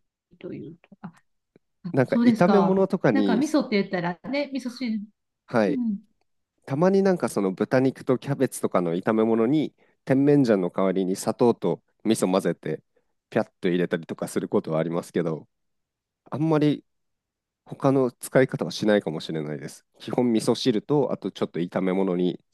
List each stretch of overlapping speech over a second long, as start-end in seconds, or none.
1.9-3.4